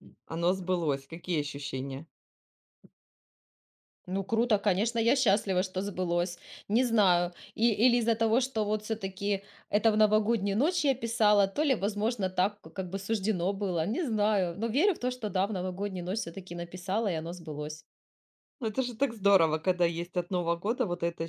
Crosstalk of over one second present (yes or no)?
no